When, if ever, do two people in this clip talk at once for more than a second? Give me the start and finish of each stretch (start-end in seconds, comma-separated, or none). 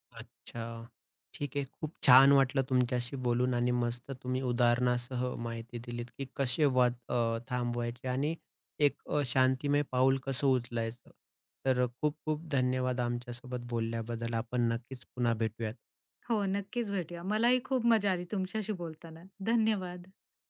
none